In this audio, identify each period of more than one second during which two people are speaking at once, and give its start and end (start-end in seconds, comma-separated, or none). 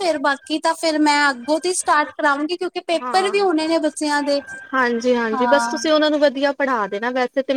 none